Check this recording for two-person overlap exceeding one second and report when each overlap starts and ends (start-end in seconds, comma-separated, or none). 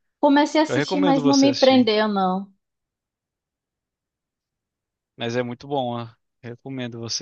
0.7-1.9